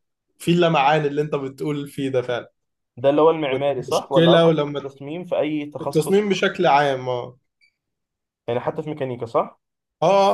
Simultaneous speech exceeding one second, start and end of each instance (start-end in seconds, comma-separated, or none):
3.5-4.8